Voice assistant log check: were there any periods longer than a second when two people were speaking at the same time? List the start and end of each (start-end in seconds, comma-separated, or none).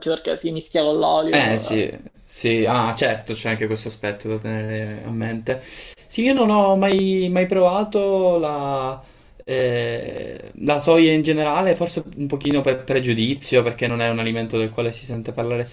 none